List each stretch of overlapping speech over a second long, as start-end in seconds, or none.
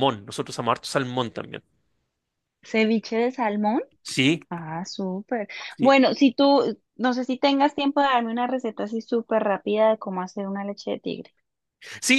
none